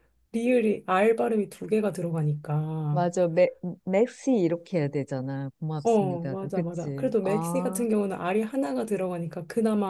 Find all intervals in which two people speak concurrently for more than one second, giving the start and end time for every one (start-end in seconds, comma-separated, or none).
5.8-7.9